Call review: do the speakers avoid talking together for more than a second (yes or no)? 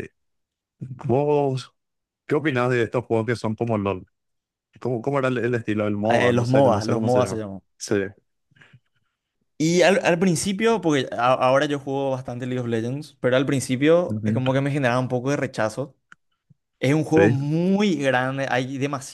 no